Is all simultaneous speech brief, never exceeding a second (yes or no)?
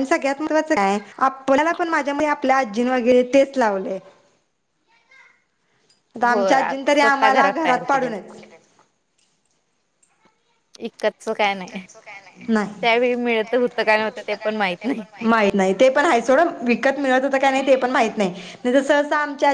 no